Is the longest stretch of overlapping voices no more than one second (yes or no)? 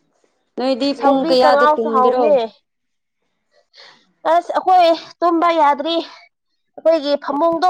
no